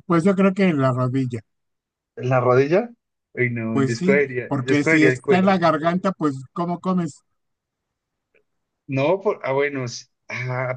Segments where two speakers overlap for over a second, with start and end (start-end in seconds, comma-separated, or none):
3.7-5.6